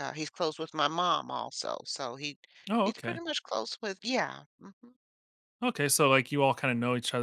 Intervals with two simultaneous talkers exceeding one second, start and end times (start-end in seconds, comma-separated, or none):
none